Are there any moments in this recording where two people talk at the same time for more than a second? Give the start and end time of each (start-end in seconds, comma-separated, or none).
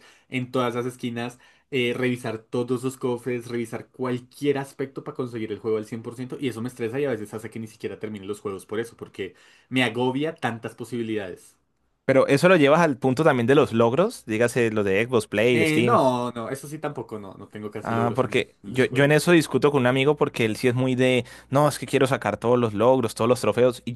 17.8-19.3